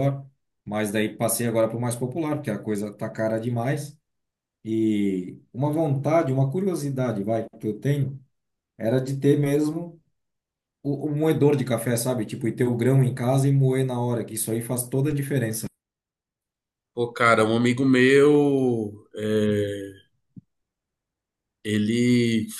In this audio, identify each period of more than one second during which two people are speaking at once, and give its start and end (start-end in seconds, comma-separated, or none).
none